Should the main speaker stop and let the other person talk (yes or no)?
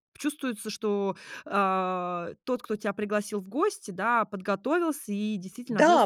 yes